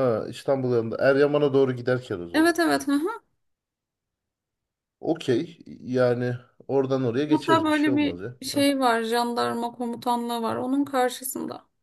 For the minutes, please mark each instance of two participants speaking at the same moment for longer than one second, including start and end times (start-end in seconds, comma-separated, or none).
7.3-8.7